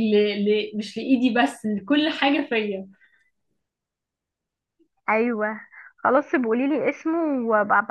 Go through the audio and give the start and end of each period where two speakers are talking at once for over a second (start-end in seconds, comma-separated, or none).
none